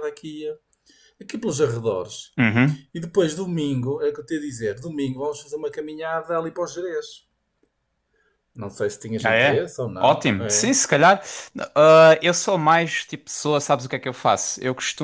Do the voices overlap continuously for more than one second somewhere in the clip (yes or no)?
yes